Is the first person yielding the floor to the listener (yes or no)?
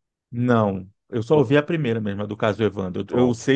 no